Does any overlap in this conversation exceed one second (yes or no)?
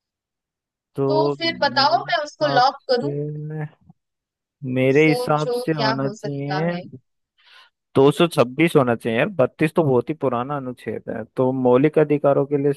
yes